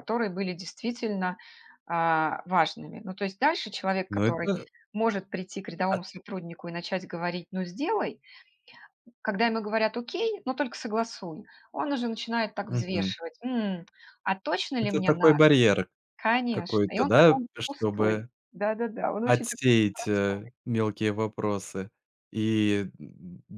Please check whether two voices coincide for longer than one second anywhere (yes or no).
yes